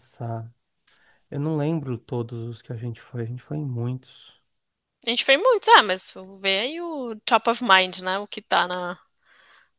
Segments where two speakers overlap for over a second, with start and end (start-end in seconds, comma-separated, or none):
none